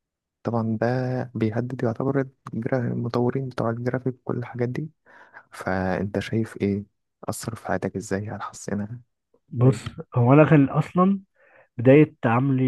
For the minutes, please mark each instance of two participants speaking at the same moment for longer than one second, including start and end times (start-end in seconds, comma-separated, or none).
none